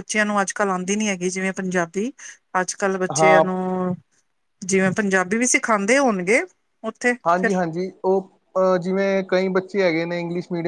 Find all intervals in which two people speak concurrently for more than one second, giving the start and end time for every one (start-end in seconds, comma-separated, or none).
none